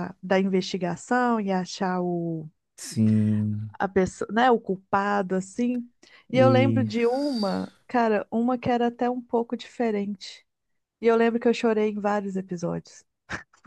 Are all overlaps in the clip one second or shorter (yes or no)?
no